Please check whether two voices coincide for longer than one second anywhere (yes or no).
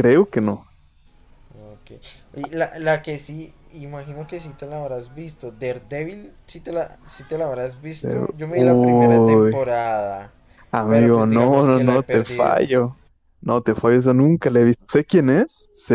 yes